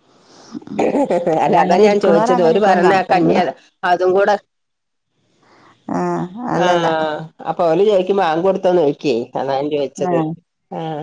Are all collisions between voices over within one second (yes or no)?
no